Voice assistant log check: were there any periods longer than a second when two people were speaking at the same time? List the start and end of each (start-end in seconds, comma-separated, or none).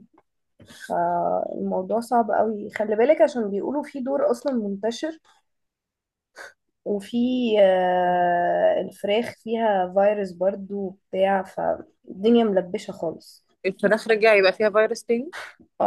none